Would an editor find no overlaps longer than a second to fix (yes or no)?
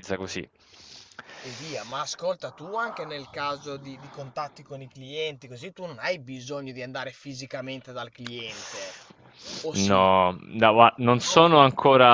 yes